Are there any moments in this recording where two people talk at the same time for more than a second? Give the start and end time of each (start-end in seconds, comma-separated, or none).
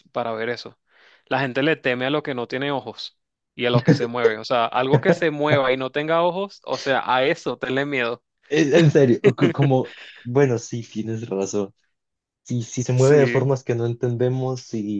none